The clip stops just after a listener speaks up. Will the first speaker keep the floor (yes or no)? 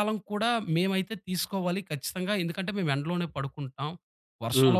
yes